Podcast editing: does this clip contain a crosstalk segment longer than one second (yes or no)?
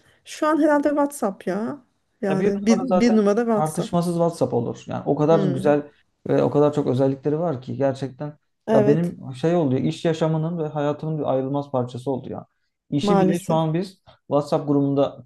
yes